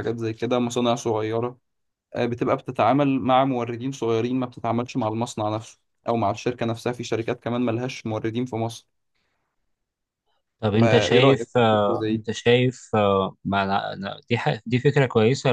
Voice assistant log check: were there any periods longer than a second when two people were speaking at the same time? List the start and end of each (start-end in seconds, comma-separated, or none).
10.8-12.3